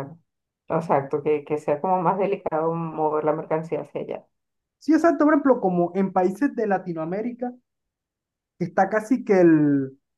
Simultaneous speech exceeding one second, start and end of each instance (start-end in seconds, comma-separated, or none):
none